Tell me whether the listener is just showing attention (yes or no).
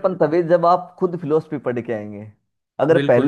yes